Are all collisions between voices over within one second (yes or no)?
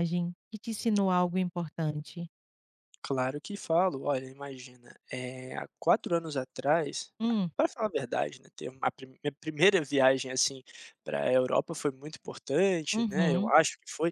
yes